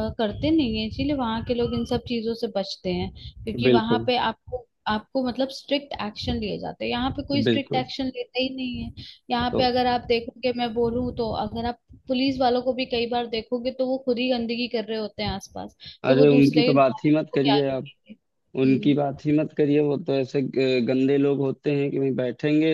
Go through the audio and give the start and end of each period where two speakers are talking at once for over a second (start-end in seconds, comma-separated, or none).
16.0-17.9